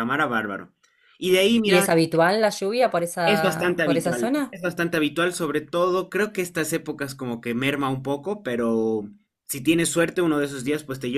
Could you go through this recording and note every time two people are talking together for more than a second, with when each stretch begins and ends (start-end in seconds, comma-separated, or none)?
3.2-4.6